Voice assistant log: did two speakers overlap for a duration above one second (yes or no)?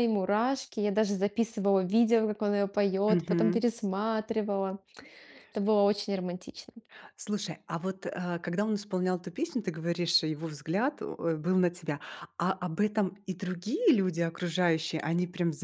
no